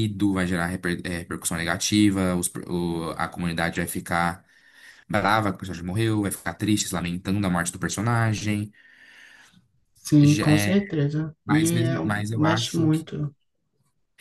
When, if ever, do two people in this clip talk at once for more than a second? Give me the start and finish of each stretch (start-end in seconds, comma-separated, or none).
11.4-12.9